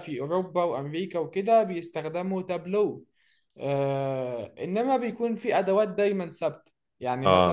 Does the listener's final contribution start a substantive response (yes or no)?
no